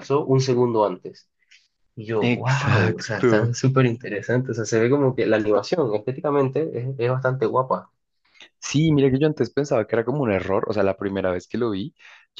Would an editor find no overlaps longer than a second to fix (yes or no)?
no